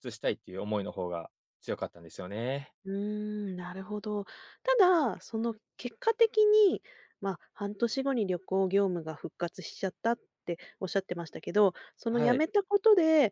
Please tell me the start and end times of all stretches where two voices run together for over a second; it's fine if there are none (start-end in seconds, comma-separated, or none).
none